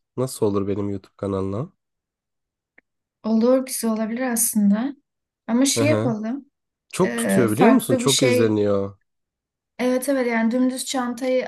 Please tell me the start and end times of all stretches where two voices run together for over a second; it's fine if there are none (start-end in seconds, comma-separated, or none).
7.0-8.6